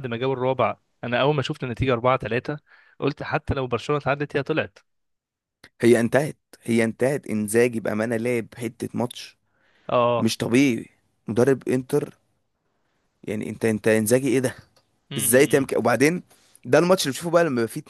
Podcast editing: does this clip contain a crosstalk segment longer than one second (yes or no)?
no